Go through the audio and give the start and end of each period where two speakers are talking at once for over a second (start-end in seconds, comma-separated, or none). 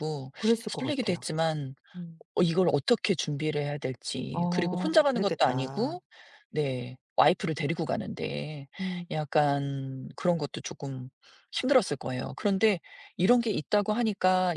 4.3-6.0